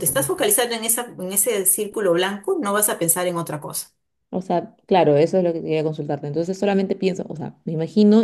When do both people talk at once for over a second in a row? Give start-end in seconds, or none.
none